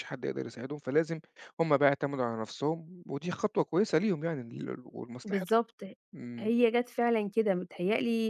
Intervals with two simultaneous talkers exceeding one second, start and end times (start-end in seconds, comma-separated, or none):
none